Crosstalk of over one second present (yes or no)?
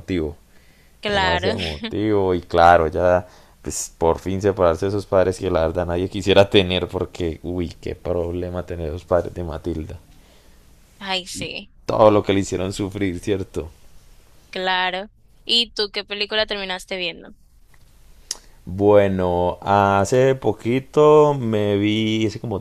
no